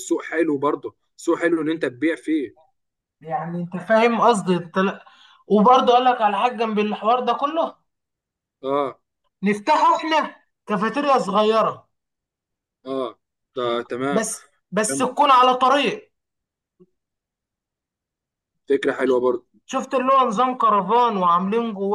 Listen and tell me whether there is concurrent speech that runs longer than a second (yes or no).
no